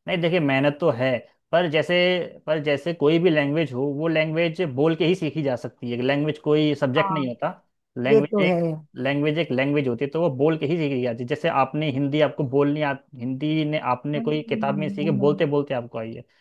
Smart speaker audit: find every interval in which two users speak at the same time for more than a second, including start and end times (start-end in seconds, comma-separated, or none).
14.2-15.4